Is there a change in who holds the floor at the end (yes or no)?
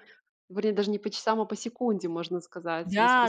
yes